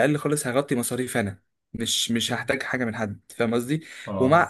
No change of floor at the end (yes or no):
yes